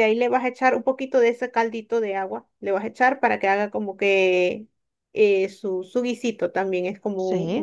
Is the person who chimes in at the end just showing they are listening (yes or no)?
yes